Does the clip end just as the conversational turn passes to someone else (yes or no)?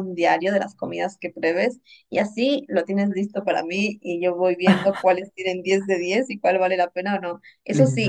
no